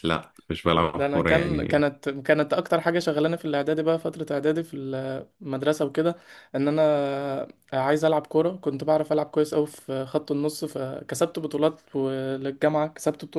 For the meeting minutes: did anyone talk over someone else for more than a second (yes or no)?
yes